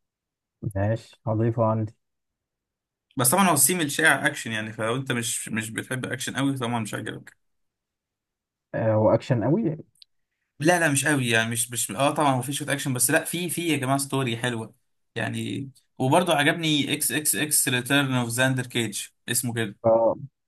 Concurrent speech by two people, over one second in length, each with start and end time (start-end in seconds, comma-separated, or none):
none